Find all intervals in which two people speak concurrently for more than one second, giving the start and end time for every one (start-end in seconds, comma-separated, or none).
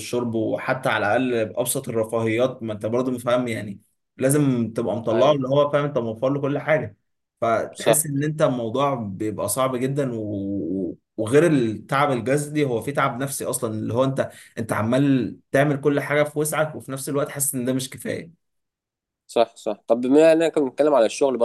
none